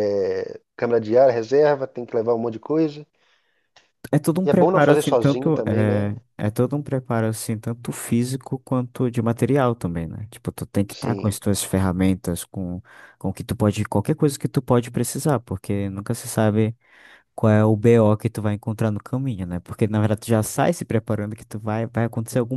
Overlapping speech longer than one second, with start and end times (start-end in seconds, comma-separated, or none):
4.4-6.1